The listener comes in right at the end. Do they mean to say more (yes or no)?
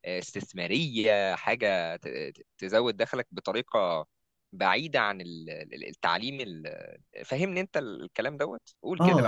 yes